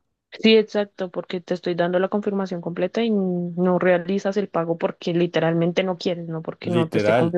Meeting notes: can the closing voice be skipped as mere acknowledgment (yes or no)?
no